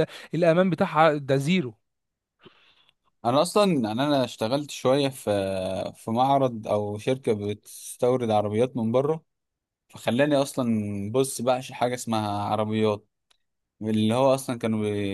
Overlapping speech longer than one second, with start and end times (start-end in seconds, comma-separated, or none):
none